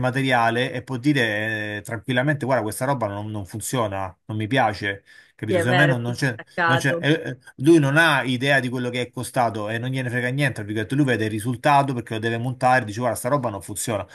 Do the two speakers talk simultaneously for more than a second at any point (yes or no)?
yes